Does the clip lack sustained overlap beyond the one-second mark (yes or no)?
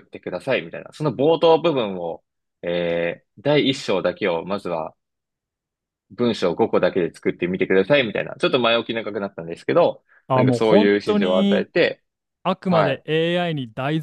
no